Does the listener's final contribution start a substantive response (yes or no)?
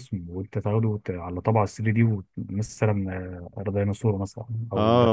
yes